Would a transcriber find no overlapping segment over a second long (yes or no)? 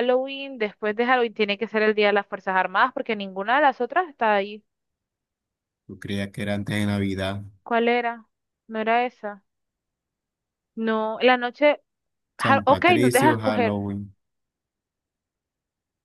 no